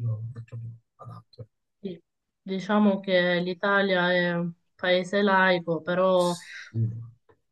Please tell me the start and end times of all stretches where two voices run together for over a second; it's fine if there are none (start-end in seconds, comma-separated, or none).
none